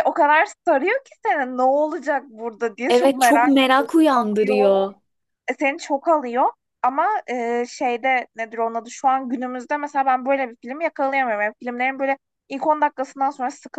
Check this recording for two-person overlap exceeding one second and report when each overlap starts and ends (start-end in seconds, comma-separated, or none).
2.9-4.7